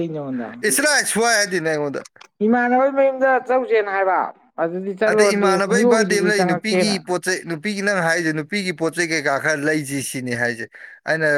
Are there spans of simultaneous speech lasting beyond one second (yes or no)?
yes